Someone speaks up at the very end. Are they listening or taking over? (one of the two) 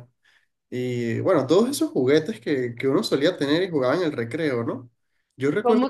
taking over